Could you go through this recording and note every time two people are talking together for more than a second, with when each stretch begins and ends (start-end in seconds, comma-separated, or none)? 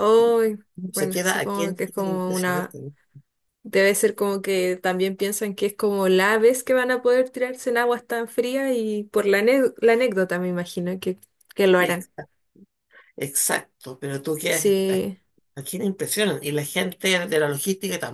0.9-2.6